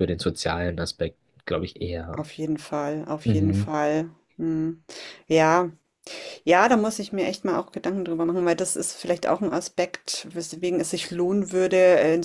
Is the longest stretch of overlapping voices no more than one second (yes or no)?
yes